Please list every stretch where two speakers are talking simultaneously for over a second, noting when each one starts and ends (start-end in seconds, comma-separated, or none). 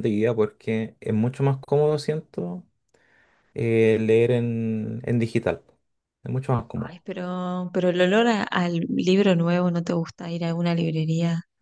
none